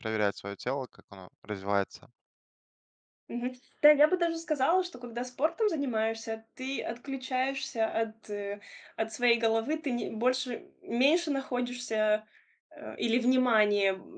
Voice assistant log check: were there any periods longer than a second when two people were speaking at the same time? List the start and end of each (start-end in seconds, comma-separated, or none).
none